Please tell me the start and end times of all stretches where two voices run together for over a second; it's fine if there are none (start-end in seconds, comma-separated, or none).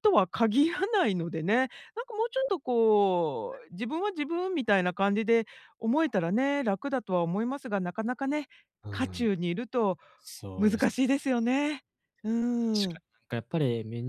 none